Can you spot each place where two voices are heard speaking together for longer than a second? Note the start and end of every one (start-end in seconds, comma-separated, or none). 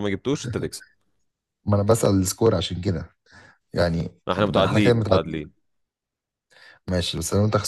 4.3-5.5